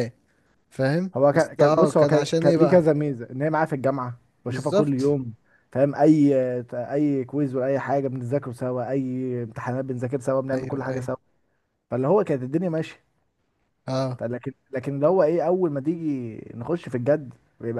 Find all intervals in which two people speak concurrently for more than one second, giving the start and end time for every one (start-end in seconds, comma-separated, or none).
1.1-2.8